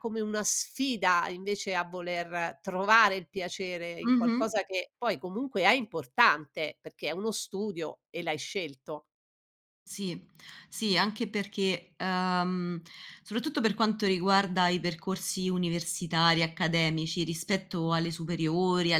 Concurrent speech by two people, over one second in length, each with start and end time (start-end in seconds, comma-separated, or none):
none